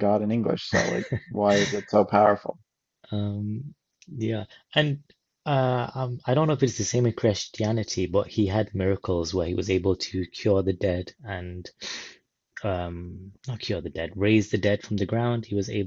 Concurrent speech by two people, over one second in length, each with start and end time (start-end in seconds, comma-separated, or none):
none